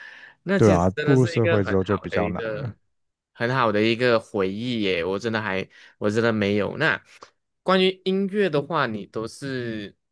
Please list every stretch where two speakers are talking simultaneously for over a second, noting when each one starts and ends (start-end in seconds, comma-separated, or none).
0.6-2.7